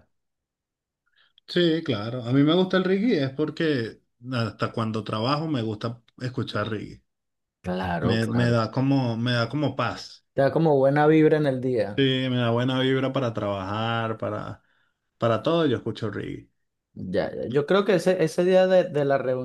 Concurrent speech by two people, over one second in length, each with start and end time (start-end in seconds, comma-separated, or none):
none